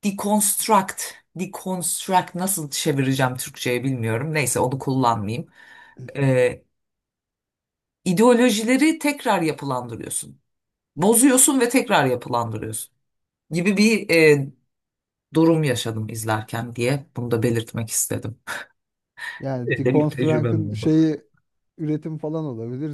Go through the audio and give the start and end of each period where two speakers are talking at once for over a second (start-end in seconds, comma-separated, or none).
19.7-21.1